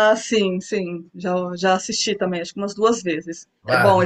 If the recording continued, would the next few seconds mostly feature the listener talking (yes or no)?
yes